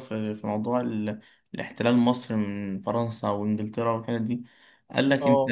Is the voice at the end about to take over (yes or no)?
no